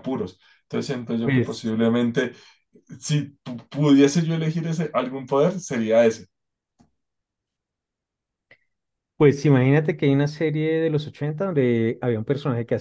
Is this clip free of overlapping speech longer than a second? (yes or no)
yes